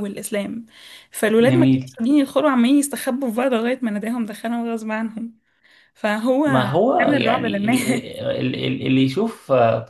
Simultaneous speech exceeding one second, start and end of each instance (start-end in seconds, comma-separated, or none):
7.0-8.2